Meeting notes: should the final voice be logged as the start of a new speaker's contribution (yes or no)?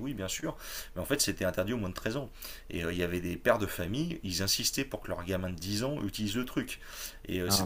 no